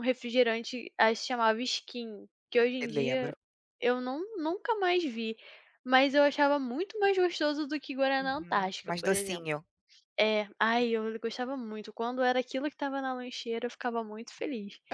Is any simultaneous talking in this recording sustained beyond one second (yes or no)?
yes